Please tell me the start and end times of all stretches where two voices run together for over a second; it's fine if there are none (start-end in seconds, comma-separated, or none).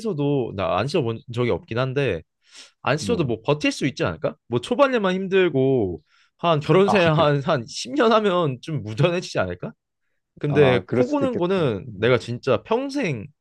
10.5-12.2